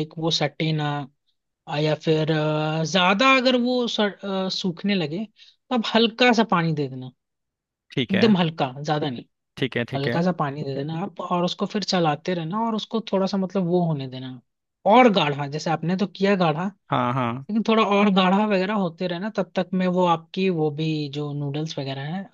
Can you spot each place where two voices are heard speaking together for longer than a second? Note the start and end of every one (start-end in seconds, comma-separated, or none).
none